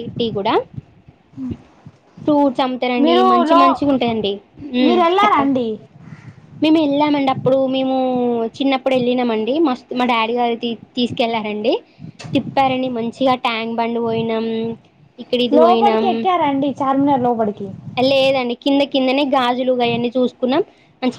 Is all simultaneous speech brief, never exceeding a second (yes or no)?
yes